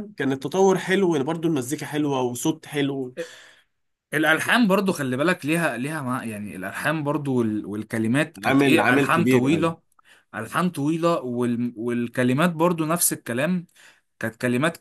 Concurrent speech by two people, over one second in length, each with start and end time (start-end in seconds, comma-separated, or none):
8.4-9.7